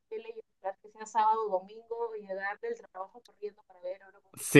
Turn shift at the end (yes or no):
yes